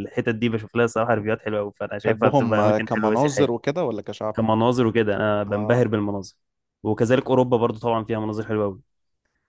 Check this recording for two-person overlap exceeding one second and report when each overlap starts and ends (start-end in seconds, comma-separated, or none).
2.0-3.5